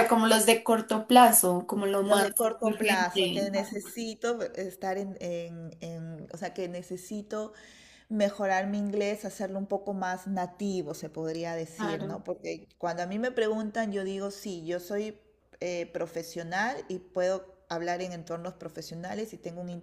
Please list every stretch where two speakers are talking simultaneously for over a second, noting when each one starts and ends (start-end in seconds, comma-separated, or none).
2.0-3.5